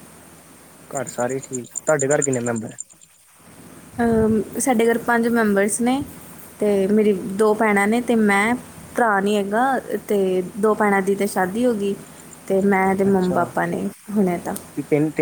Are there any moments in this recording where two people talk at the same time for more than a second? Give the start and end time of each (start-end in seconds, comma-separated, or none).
none